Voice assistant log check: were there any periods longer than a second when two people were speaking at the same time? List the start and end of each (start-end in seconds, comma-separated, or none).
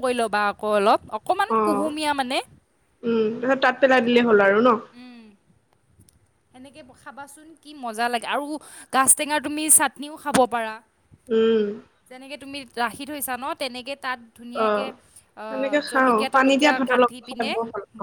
15.5-17.5